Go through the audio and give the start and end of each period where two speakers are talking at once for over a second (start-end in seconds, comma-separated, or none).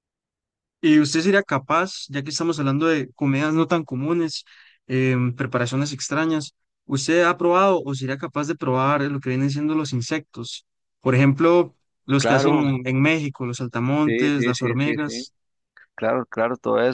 14.1-15.3